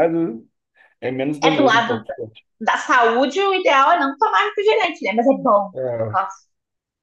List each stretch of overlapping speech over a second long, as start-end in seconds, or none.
none